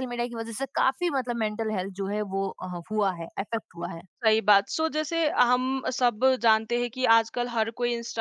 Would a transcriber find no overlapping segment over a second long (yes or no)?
yes